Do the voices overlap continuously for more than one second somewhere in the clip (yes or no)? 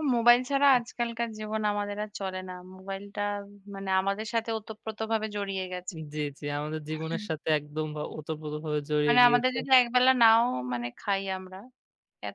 no